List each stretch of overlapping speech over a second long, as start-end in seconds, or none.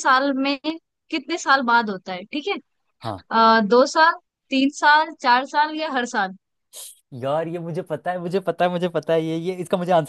none